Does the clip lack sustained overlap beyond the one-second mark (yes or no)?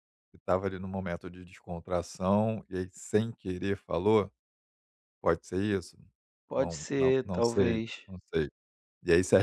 no